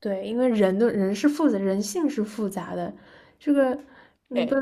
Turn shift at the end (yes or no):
no